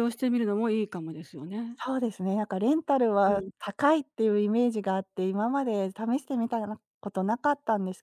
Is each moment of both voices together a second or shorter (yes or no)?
yes